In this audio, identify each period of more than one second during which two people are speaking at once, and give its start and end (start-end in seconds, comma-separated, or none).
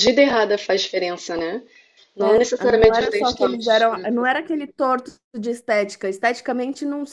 2.2-4.3